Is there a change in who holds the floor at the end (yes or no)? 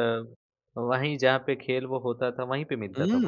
yes